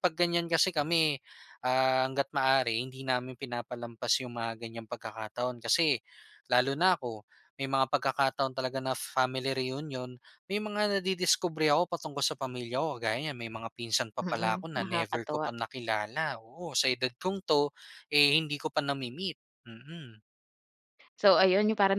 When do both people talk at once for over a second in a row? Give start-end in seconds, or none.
14.2-15.5